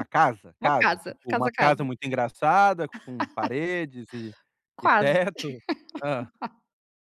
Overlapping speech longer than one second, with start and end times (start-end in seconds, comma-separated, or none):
0.6-1.9